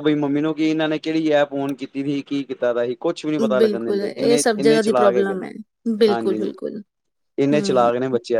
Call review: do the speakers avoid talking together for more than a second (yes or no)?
no